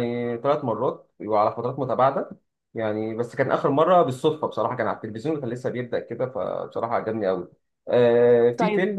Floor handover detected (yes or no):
yes